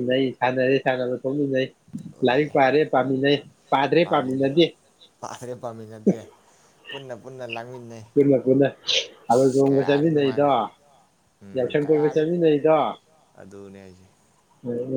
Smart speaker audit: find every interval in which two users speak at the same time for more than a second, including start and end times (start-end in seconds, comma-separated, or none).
9.3-10.5